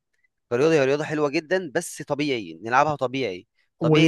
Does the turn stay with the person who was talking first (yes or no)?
yes